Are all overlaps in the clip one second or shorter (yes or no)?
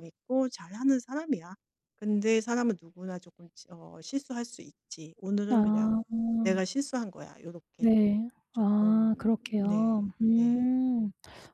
no